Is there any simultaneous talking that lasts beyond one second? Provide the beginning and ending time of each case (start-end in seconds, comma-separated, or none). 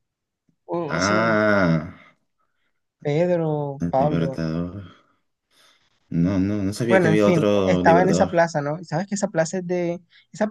6.8-8.4